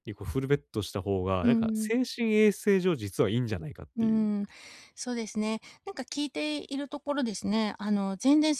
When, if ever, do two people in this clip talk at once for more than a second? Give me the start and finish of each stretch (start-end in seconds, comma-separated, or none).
none